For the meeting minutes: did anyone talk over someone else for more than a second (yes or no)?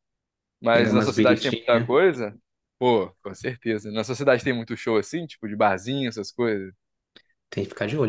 yes